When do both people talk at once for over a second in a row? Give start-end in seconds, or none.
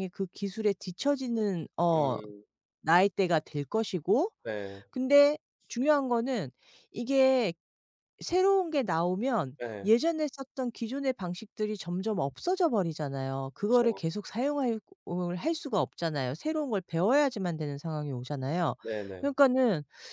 none